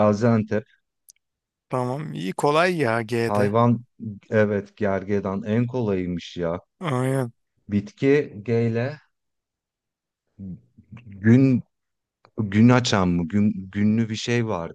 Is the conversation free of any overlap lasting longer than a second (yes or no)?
yes